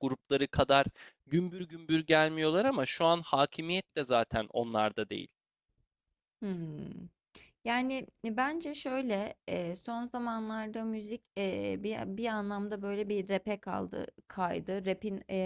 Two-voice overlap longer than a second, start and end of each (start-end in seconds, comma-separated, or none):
none